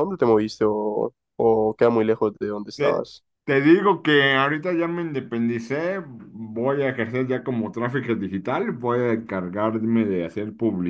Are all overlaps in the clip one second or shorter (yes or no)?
yes